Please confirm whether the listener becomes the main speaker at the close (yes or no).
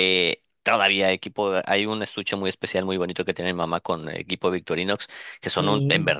no